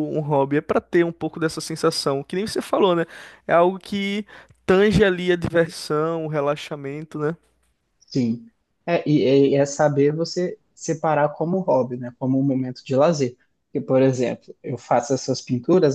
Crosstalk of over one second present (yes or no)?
no